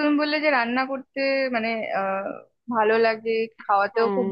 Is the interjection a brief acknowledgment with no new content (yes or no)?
yes